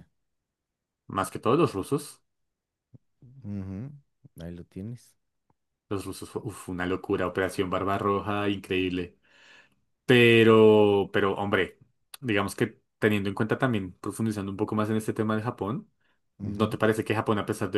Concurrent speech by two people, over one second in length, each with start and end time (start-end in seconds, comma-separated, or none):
none